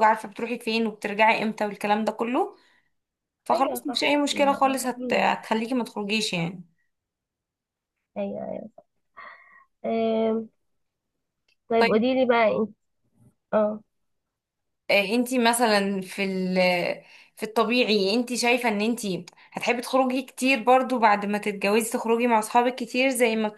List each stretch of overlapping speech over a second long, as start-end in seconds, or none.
3.5-4.9